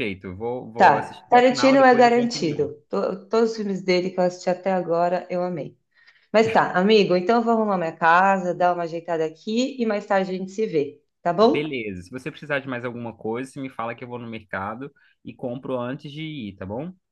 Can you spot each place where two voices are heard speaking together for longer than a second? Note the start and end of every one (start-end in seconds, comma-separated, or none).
0.8-2.7